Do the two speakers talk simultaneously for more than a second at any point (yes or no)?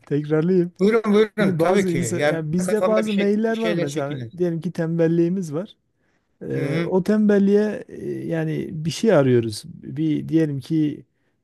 yes